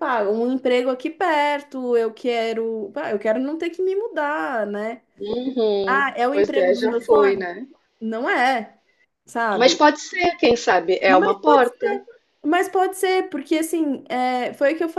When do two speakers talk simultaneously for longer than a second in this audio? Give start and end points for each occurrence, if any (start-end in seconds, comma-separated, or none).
5.8-7.4